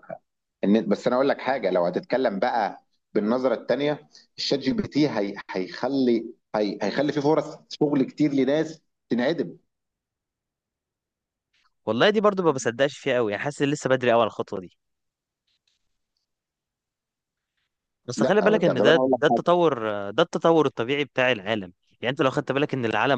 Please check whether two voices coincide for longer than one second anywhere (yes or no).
yes